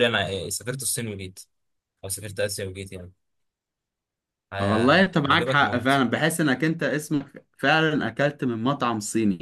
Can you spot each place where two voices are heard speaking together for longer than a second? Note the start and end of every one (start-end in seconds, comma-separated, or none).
4.6-6.0